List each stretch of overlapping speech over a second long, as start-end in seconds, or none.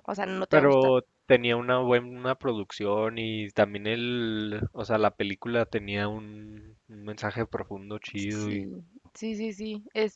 none